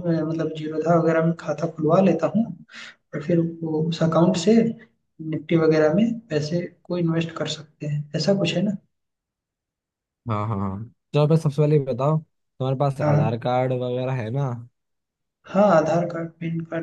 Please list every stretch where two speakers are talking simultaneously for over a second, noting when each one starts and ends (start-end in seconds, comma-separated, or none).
none